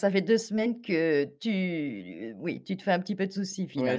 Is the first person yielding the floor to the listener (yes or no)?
yes